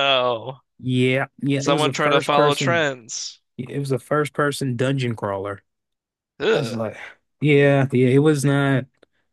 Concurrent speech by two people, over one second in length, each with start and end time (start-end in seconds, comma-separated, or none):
1.6-2.9